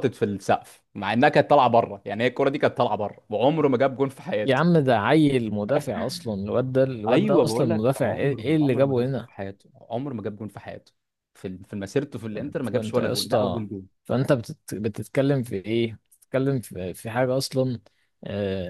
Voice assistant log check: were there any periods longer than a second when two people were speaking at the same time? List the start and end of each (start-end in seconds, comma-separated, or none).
7.1-9.3, 12.3-13.7